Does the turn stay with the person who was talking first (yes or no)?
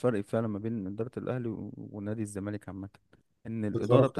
yes